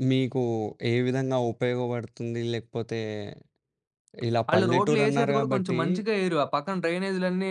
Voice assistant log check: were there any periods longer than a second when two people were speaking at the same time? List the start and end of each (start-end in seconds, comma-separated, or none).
4.5-5.8